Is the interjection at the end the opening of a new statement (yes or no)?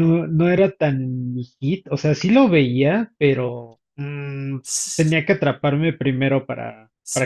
yes